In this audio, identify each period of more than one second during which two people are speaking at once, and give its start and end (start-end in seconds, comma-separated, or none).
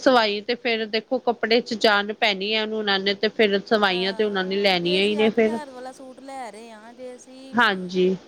3.9-5.6